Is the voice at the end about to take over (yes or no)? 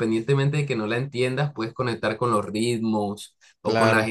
no